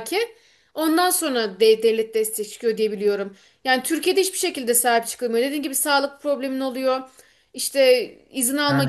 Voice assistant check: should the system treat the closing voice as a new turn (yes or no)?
no